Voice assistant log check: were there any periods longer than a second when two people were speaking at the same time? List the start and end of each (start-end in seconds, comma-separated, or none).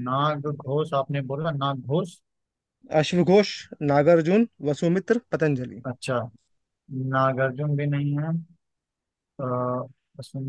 none